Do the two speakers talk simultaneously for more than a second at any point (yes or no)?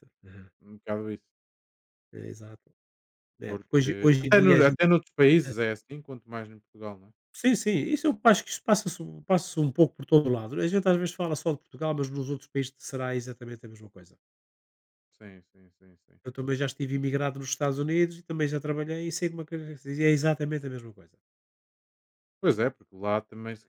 yes